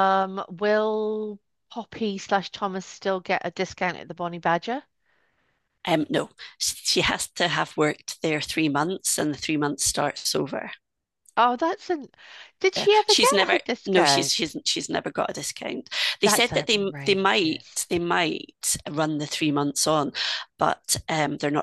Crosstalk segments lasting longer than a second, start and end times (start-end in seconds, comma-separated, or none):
12.8-14.5, 16.2-17.9